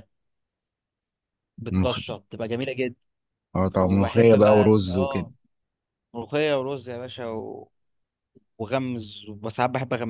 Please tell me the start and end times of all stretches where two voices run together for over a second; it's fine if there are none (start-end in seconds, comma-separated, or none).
3.8-5.3